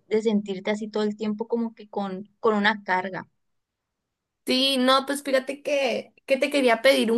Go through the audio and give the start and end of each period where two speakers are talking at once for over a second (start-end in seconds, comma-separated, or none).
none